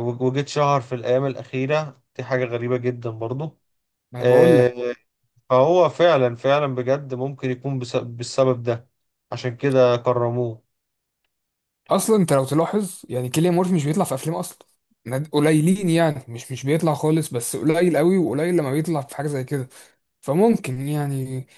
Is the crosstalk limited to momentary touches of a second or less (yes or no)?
yes